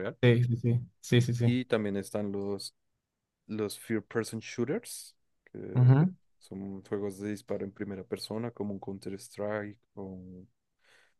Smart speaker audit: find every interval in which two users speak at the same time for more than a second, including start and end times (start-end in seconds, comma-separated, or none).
none